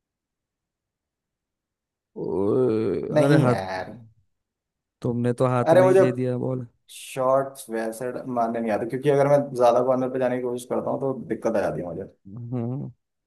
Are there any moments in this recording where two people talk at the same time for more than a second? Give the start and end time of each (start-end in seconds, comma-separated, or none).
none